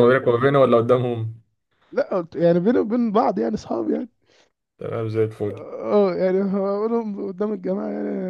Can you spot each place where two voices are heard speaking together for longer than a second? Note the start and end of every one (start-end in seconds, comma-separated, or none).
none